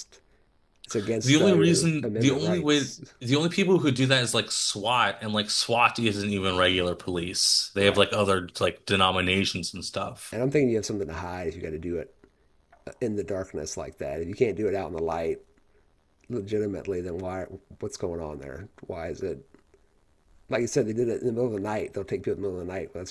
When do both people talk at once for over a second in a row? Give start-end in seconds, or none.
1.2-3.0